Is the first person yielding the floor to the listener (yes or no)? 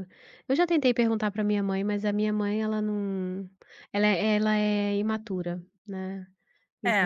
yes